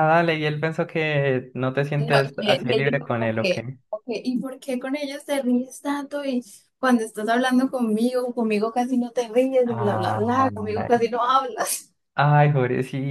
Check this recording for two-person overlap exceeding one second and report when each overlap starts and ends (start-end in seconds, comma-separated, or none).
2.0-3.6, 9.7-11.0